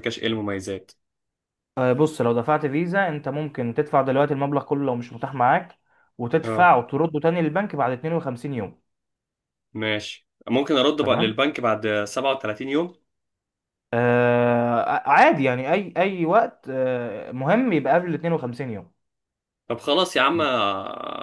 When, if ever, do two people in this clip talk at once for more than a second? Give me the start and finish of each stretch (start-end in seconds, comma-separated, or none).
none